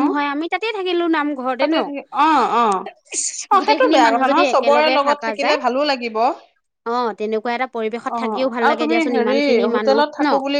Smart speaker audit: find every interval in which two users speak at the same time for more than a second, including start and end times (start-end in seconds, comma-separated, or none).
3.6-5.6